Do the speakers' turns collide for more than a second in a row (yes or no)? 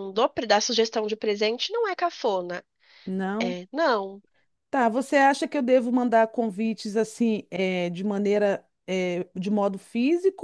no